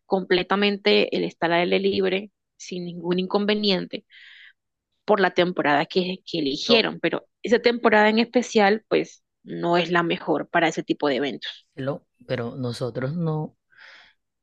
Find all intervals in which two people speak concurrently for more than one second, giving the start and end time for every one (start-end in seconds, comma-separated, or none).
none